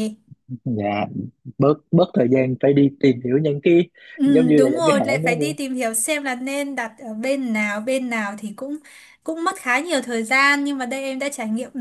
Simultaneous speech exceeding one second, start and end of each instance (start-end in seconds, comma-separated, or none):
4.2-5.6